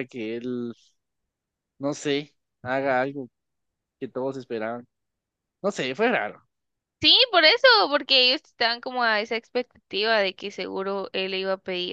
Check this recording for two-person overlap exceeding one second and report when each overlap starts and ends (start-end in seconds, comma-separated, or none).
none